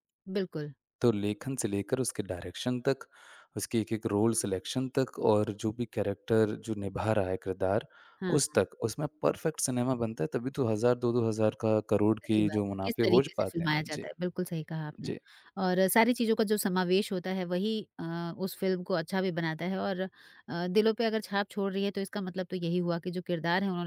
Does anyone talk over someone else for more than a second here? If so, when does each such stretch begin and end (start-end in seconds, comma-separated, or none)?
12.2-14.1